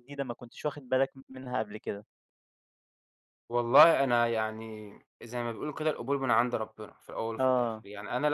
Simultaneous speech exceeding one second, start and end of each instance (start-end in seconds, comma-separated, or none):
none